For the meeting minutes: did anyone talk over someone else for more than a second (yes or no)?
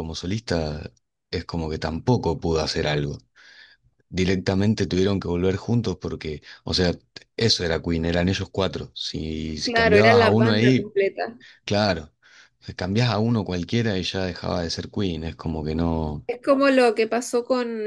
yes